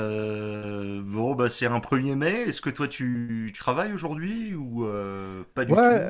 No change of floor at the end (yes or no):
no